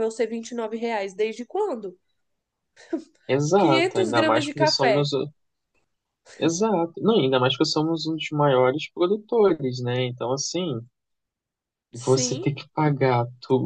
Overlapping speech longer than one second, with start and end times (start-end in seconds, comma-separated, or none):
3.6-5.1